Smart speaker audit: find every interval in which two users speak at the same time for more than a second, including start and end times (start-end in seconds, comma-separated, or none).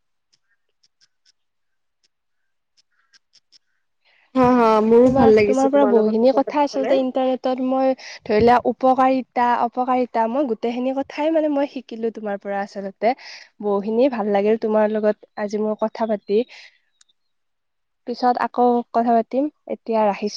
5.1-7.2